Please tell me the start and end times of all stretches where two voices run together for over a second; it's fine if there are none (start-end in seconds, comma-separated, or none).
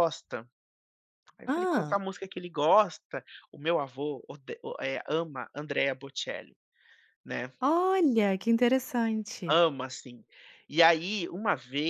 none